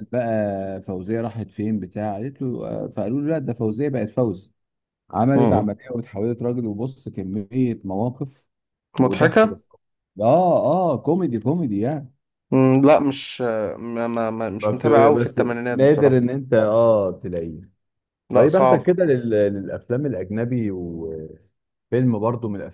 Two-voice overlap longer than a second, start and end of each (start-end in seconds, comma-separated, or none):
14.6-16.2